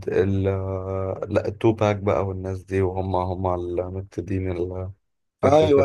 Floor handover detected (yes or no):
yes